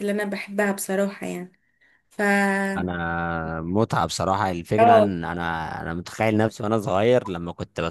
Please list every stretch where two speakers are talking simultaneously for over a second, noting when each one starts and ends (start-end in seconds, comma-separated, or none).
none